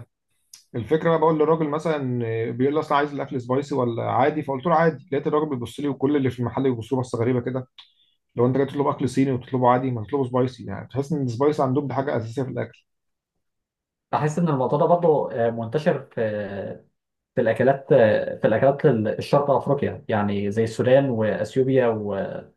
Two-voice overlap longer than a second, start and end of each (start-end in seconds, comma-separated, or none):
none